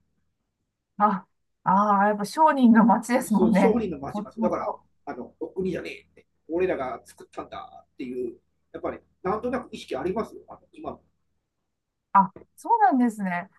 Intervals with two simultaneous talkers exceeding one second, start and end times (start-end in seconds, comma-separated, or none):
3.2-4.8